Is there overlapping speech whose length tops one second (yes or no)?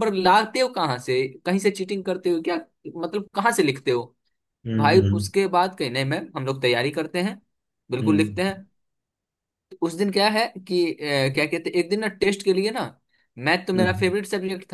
no